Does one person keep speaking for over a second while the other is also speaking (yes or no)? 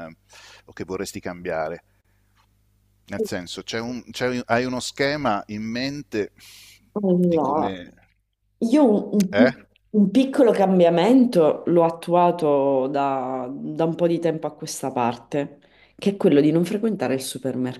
no